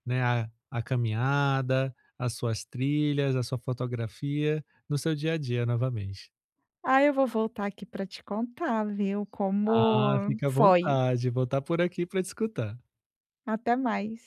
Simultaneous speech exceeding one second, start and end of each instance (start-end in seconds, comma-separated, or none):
9.7-11.0